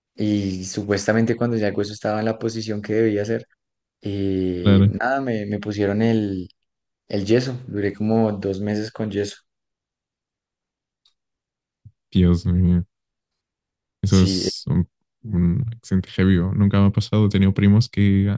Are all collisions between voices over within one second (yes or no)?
yes